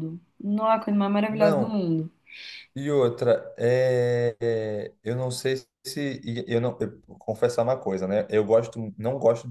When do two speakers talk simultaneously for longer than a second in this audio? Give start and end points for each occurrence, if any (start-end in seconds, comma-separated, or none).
none